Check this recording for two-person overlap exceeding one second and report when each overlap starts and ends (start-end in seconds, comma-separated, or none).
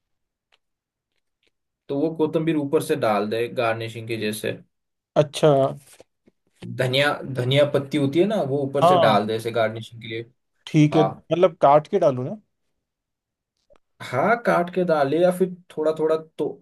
none